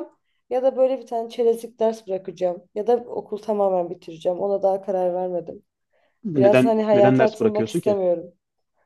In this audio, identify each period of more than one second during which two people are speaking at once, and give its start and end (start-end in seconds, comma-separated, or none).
6.4-8.0